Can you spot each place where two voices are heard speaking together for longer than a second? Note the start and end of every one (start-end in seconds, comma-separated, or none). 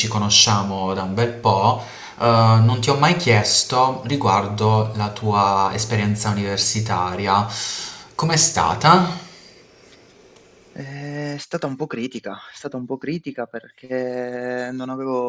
none